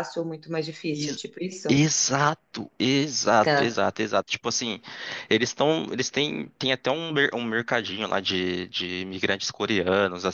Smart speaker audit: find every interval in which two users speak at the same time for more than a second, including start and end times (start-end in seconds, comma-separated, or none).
none